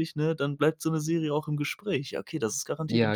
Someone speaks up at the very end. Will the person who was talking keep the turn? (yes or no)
no